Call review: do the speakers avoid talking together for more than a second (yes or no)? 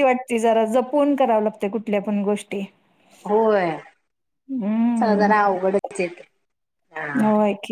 yes